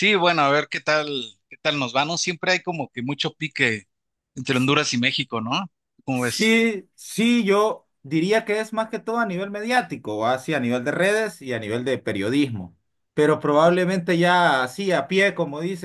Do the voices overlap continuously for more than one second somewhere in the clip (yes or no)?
no